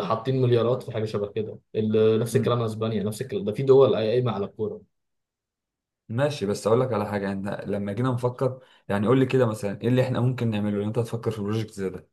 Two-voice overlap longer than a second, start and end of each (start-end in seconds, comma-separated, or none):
none